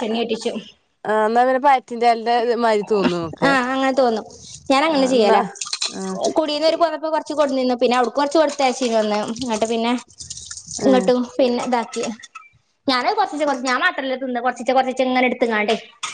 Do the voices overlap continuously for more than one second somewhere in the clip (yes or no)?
no